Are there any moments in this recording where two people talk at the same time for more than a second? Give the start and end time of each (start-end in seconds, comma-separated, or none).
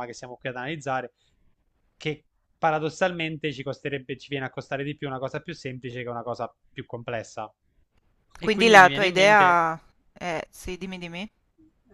8.4-9.6